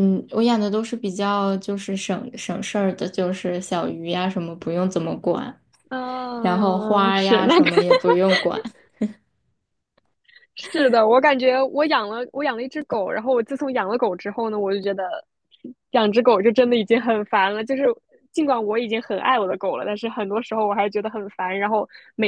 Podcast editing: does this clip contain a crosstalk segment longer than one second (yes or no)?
yes